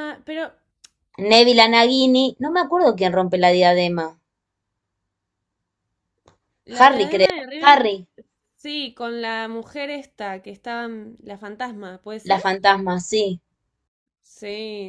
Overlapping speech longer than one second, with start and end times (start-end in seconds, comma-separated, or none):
6.7-8.0